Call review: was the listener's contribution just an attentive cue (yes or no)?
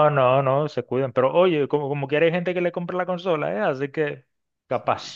no